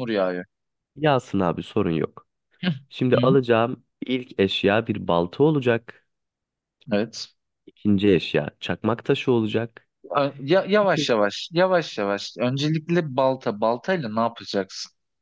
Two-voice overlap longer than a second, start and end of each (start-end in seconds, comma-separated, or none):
none